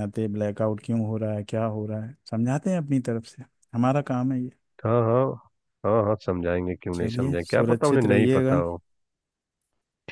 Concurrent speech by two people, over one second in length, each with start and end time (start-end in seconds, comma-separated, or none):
6.9-8.6